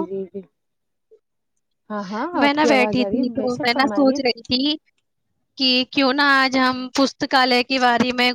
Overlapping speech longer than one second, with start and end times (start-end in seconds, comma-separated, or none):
2.4-4.2